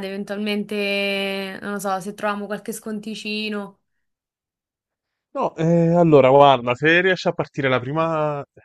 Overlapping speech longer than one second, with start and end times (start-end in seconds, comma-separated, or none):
none